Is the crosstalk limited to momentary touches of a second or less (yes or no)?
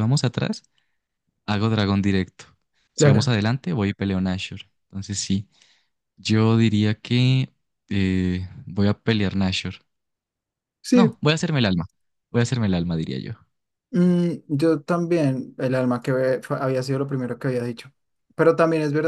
yes